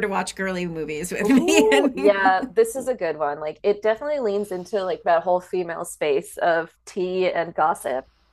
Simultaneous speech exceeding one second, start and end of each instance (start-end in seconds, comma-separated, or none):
1.2-2.5